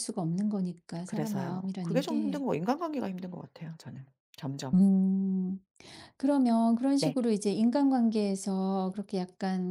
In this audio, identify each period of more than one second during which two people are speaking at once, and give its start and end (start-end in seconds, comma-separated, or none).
1.1-2.4